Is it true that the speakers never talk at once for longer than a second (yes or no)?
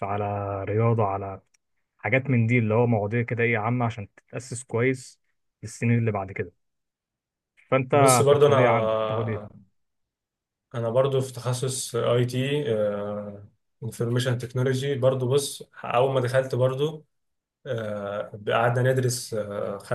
no